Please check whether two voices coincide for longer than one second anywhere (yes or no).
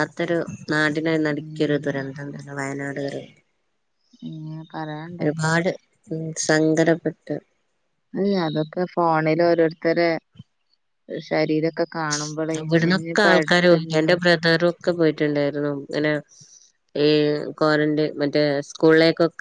yes